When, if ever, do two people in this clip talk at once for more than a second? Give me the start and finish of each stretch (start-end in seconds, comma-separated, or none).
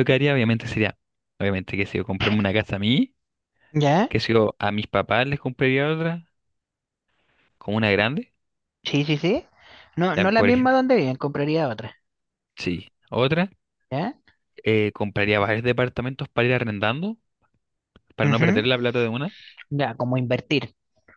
none